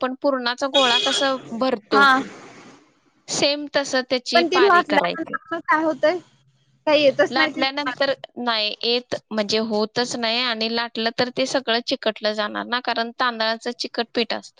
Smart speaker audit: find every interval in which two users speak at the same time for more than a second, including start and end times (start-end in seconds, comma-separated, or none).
none